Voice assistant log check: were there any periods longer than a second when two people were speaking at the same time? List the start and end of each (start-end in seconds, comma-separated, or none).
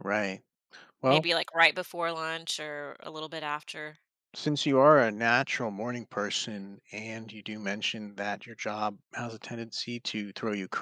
none